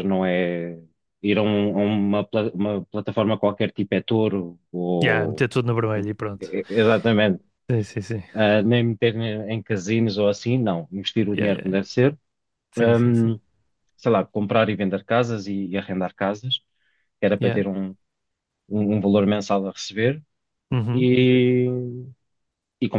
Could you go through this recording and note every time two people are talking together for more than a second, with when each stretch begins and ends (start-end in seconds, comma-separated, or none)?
none